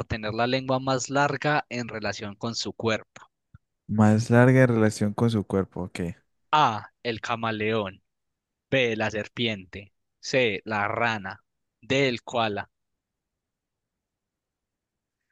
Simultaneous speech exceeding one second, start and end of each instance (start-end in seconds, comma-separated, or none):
none